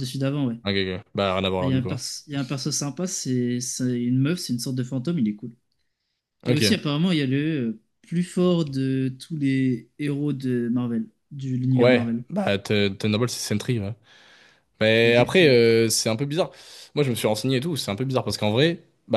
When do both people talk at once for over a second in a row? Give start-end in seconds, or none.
none